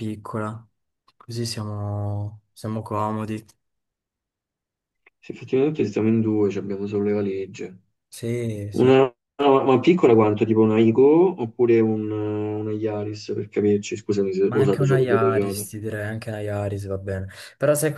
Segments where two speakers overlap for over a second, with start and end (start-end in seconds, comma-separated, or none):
14.4-15.7